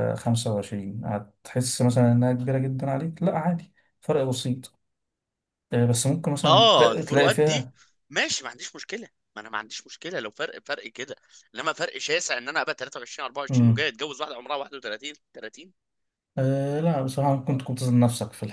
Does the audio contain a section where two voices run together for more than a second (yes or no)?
yes